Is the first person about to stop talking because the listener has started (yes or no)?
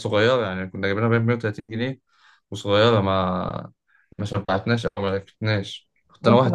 yes